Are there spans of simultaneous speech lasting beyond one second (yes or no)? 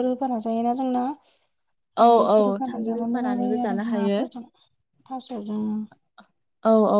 yes